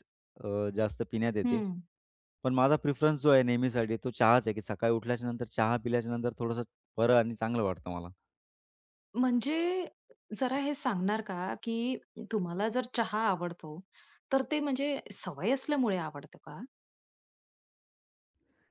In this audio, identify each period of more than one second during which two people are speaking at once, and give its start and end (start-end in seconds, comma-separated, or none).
none